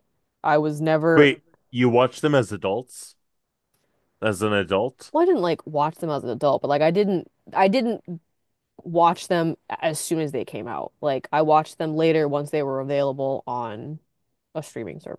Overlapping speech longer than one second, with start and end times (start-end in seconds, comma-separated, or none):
none